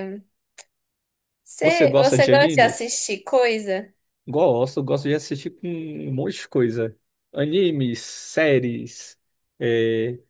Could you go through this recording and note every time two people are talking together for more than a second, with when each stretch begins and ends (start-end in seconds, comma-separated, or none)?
1.6-3.0